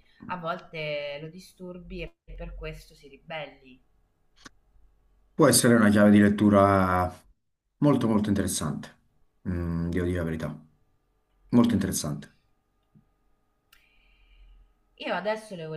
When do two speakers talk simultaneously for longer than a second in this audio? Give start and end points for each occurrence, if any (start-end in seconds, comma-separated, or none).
none